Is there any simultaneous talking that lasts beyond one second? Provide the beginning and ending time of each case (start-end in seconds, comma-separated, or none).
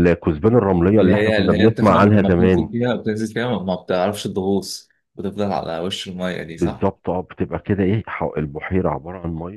1.0-2.7